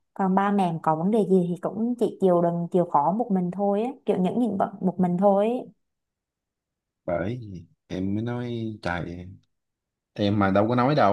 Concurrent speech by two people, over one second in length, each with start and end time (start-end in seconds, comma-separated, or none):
none